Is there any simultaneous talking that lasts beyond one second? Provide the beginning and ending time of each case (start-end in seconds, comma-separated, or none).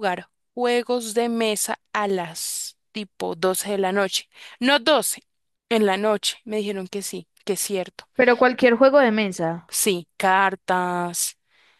none